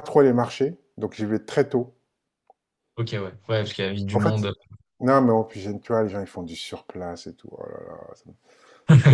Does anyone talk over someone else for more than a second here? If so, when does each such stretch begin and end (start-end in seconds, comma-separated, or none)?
none